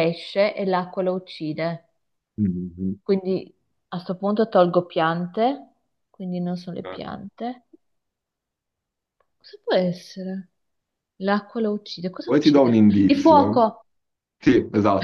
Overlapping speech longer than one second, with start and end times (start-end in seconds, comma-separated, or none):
12.2-13.6